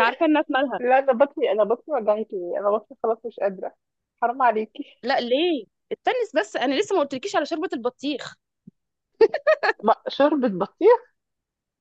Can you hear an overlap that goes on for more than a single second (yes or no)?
no